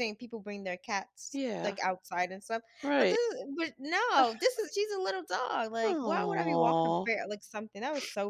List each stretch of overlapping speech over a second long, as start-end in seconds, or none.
5.8-7.1